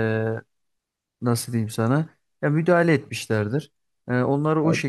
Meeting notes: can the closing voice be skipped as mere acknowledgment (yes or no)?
yes